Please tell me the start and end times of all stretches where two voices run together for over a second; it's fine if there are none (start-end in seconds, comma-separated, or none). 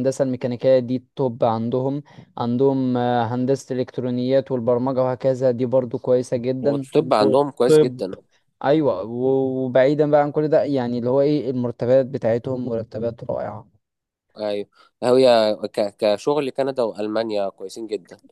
6.6-8.0